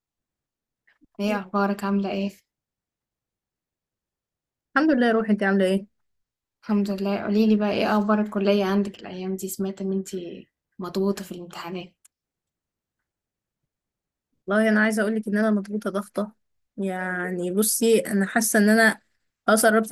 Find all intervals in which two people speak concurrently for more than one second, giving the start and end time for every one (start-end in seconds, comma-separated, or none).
none